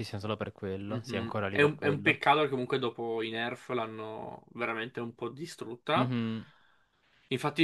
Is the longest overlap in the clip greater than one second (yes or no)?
yes